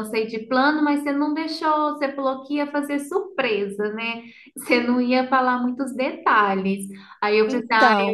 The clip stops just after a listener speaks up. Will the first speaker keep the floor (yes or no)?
yes